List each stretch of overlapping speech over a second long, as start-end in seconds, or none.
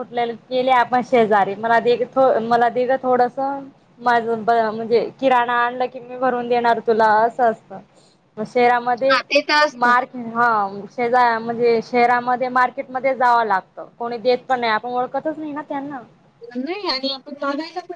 none